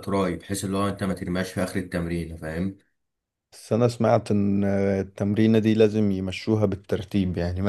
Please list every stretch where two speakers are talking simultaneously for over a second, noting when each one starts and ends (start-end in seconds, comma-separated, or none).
none